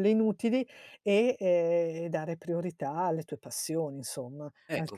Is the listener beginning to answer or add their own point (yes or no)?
yes